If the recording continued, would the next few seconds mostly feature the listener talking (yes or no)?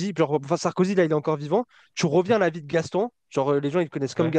no